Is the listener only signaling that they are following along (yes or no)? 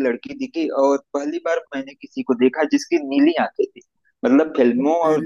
yes